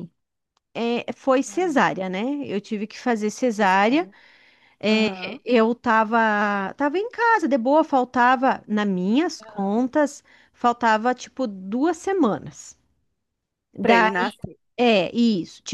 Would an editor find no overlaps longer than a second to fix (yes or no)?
yes